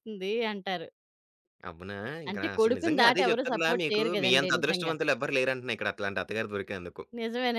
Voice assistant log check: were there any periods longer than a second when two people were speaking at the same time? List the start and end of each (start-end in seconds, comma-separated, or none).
2.3-4.9